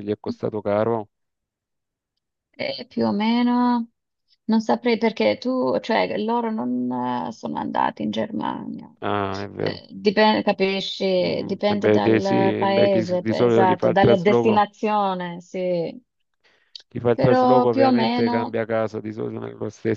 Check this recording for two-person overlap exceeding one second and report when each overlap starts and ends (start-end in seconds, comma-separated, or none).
11.2-14.6, 17.1-18.6